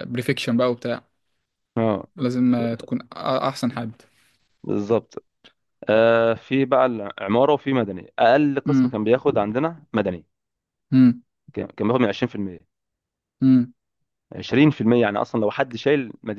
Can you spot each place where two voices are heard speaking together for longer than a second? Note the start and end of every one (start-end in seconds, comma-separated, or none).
none